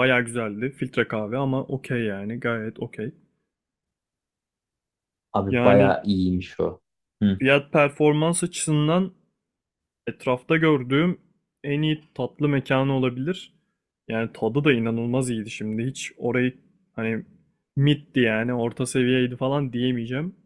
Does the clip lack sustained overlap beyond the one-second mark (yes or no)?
yes